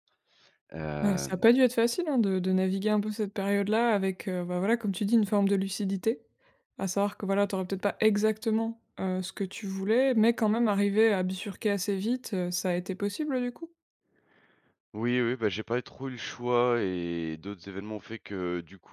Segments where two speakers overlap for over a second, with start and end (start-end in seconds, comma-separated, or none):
none